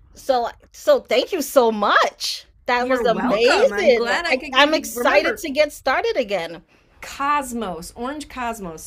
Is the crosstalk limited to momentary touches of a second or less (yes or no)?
no